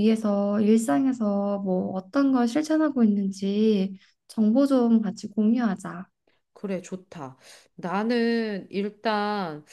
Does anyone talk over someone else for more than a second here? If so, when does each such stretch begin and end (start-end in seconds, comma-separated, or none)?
none